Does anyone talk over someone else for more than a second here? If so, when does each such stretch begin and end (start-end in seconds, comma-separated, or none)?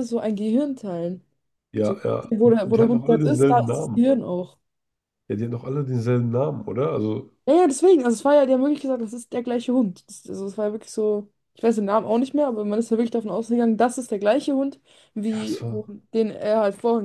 1.8-4.0